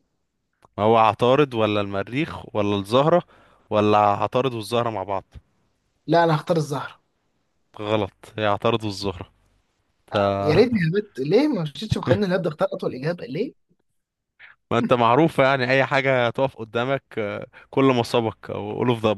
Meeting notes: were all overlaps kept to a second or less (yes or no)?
yes